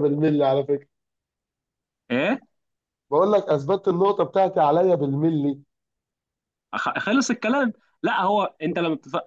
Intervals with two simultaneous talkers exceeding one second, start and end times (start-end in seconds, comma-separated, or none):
none